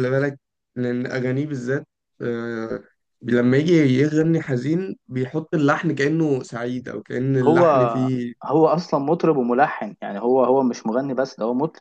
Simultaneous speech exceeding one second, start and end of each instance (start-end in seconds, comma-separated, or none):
none